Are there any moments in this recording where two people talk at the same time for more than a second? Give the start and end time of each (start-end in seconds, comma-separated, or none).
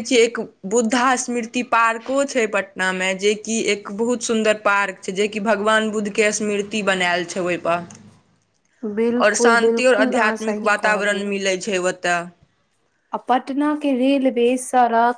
9.2-11.3